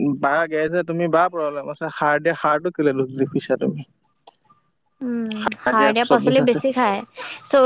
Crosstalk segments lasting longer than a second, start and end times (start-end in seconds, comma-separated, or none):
none